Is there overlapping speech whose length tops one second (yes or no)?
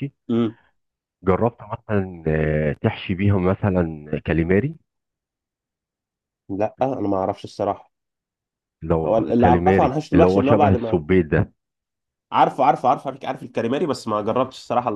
yes